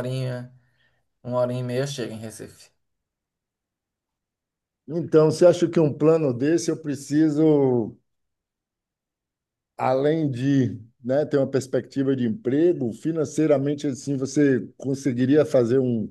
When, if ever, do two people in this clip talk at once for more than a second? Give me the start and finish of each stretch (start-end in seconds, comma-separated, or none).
none